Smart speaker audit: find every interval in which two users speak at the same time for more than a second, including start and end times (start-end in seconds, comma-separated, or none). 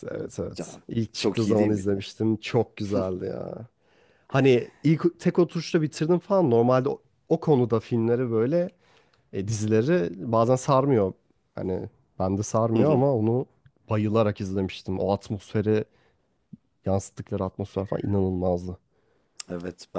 0.5-2.0